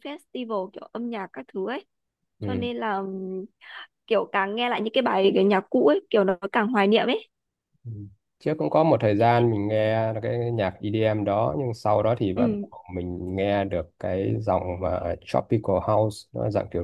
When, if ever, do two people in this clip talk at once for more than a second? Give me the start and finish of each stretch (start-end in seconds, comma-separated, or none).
none